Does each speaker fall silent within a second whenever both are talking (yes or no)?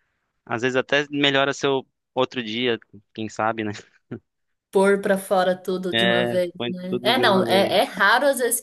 no